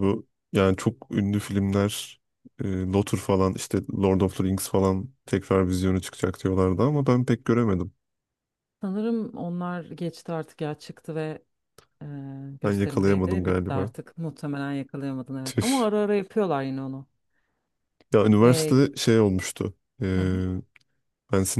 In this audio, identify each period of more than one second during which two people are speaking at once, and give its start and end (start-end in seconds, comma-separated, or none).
12.6-13.9